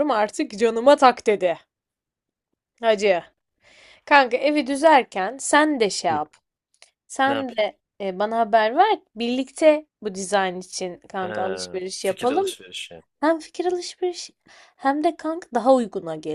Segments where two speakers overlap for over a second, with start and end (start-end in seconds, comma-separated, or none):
11.1-12.5